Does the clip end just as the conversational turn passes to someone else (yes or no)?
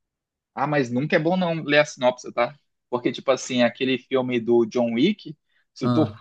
no